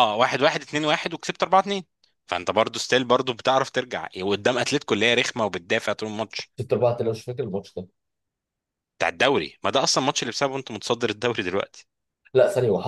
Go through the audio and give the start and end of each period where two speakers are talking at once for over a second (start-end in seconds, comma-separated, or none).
none